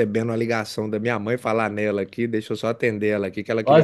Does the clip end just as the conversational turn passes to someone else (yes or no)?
yes